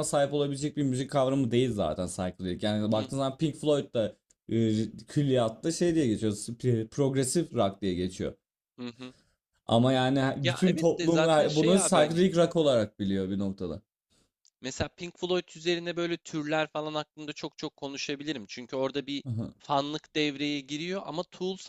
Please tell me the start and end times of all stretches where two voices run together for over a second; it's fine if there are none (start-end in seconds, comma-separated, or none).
10.4-12.2